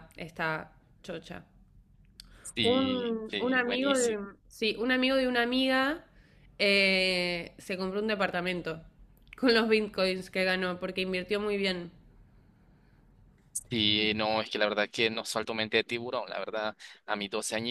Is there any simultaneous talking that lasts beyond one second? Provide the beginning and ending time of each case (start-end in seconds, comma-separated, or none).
2.6-4.2